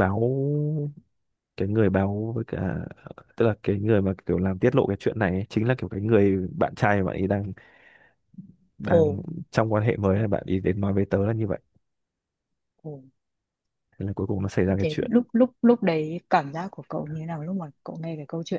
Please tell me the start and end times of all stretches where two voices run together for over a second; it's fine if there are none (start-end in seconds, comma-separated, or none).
none